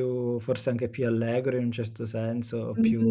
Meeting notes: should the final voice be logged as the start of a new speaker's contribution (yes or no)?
yes